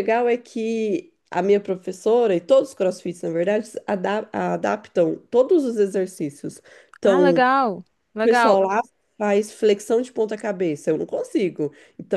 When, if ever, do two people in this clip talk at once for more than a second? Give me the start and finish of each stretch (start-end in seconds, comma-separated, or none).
none